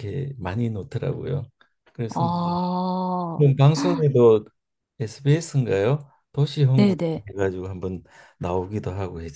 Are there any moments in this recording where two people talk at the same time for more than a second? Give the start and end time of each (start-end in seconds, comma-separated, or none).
none